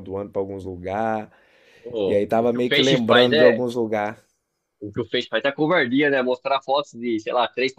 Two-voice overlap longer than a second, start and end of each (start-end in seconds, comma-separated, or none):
2.1-3.6